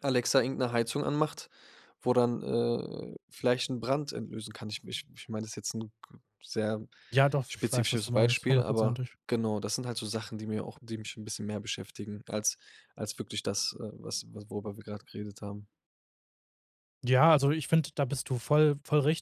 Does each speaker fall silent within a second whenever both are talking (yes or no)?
no